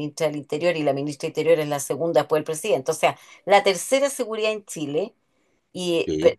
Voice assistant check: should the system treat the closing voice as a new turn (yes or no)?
no